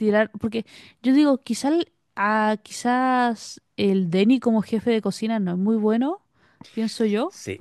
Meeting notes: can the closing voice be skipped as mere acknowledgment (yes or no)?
no